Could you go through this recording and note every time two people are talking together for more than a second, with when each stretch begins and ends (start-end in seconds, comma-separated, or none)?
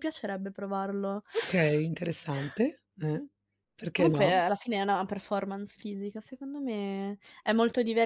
none